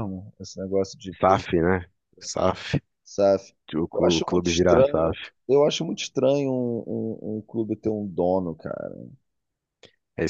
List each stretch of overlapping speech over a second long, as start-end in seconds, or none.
3.9-5.1